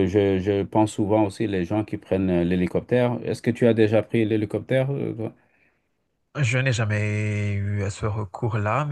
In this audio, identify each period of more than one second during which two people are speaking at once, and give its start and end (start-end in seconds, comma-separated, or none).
none